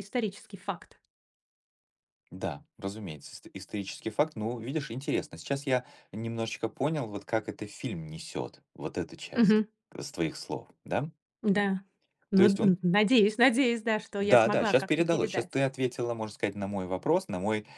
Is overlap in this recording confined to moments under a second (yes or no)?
no